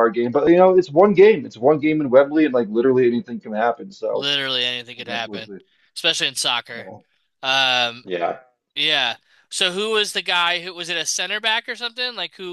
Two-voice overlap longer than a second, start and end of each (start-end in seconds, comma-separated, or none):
none